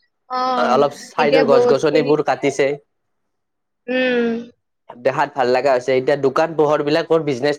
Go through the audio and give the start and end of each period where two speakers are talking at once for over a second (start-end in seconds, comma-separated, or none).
1.2-2.7